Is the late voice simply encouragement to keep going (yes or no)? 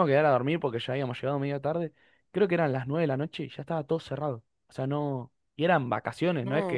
yes